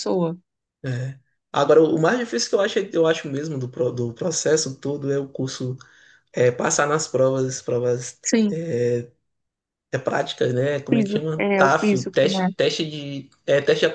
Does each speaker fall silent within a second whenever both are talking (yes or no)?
no